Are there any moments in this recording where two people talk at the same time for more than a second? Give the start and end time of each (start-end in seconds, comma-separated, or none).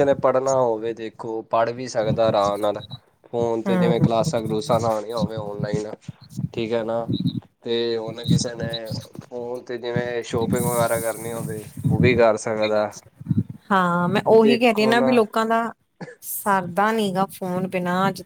none